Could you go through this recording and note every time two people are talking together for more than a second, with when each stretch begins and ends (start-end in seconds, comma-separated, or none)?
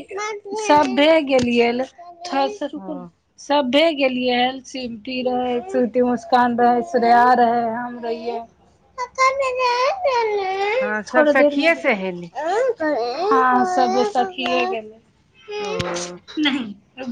none